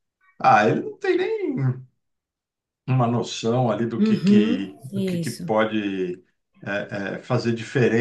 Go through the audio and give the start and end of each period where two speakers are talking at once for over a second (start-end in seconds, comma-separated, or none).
4.0-5.5